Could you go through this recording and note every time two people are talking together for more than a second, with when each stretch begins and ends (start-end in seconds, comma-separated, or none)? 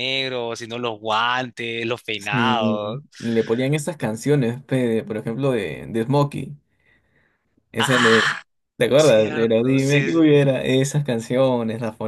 8.9-10.3